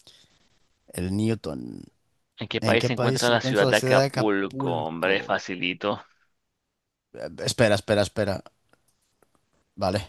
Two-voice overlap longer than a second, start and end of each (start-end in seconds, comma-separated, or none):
2.6-5.4